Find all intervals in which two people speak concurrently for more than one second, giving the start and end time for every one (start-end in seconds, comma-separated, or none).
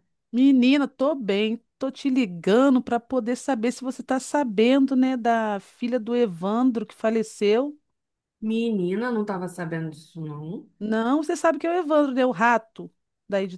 none